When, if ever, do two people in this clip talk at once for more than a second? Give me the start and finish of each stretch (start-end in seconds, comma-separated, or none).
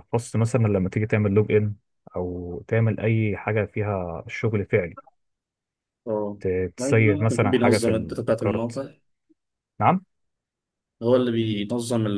6.8-8.8